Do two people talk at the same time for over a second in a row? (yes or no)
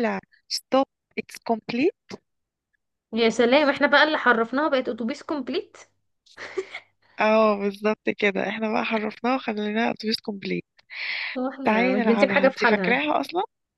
yes